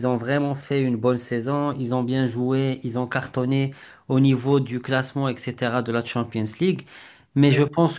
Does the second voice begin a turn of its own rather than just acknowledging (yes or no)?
no